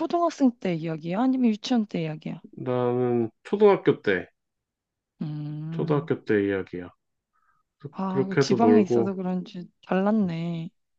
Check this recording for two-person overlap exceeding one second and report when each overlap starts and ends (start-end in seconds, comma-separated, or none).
7.9-9.1